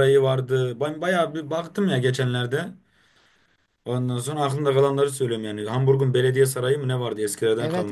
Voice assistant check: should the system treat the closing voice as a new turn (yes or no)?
yes